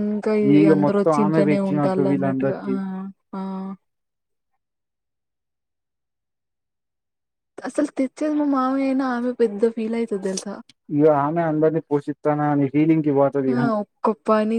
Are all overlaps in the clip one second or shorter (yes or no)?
no